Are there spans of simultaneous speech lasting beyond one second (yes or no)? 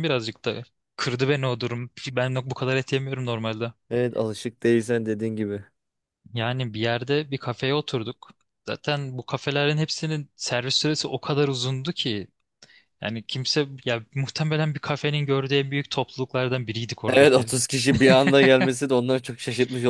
no